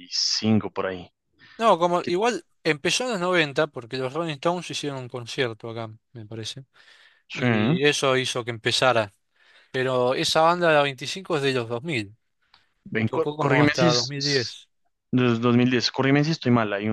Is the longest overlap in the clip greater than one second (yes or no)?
yes